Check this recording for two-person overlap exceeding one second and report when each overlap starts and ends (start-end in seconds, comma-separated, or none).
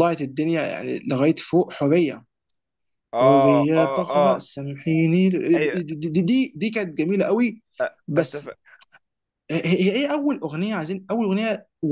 3.1-4.4